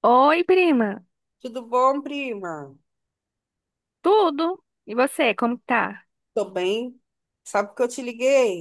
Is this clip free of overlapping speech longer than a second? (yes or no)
yes